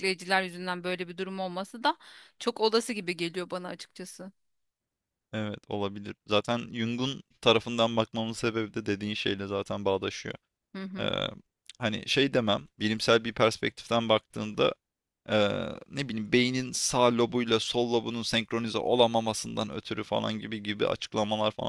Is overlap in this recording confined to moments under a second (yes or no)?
yes